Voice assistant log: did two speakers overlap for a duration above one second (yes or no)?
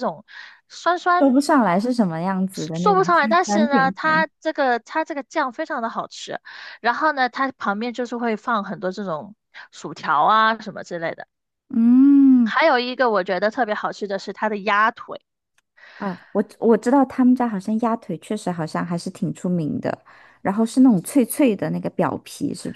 yes